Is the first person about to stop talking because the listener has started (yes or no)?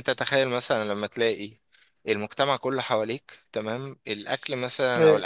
no